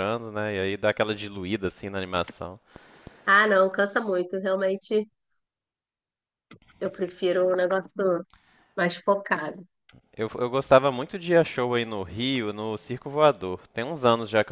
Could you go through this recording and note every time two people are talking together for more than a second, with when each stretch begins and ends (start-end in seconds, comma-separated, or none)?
none